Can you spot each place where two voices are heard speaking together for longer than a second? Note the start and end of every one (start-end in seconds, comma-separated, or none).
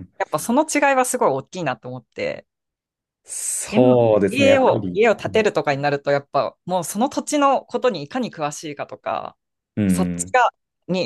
3.7-5.5